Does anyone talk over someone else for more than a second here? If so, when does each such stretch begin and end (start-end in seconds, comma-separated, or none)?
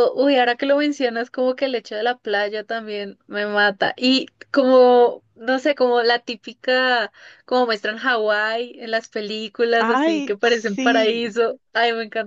9.8-11.3